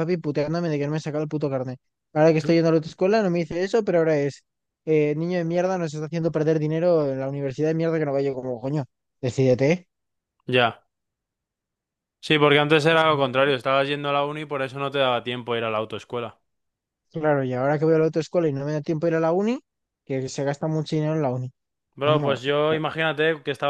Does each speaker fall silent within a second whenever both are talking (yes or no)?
yes